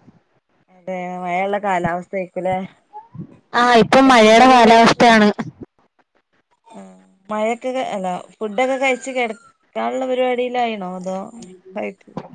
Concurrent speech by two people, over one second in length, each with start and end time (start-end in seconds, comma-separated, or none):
none